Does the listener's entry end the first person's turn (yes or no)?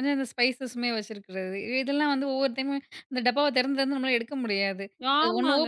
yes